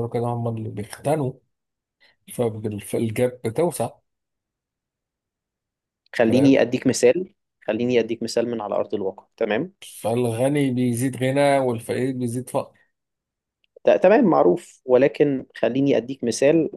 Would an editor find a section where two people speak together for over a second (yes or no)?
no